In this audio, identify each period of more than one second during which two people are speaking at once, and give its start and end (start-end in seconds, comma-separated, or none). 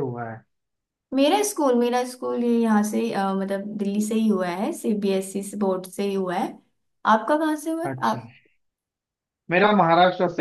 none